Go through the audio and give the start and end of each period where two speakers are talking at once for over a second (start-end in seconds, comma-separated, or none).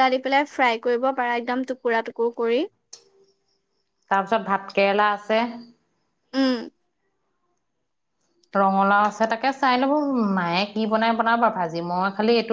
none